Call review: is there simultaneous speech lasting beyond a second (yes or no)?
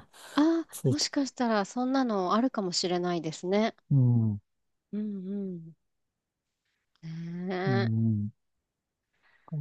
no